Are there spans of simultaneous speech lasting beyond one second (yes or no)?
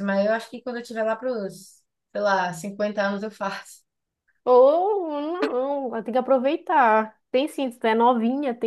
no